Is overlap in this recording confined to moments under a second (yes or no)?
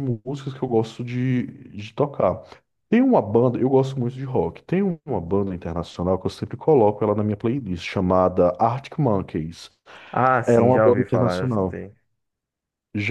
no